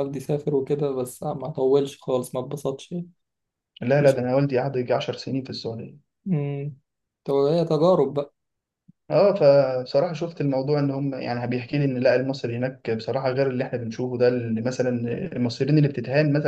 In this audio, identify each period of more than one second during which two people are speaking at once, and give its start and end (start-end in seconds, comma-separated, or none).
none